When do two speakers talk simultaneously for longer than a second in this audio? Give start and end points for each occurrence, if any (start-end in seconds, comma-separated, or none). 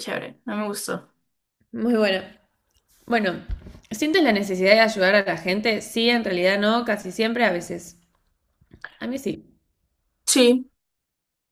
none